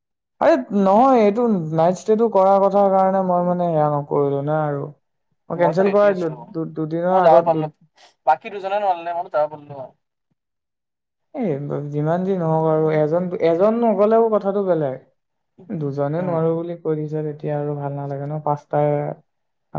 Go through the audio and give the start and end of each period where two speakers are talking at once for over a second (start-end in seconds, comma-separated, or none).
5.7-7.5